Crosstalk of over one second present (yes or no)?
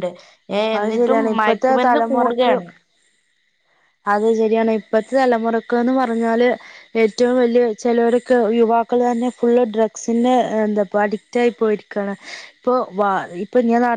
yes